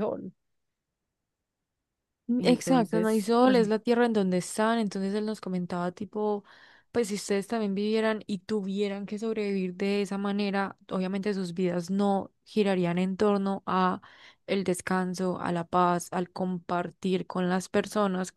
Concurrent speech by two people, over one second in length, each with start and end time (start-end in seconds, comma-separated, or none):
2.4-3.6